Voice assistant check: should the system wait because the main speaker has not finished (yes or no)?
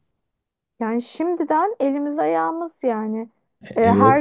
yes